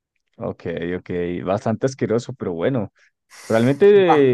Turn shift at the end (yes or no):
no